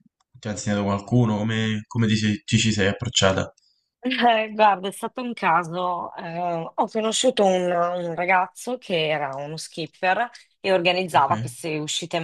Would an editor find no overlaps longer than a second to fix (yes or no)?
yes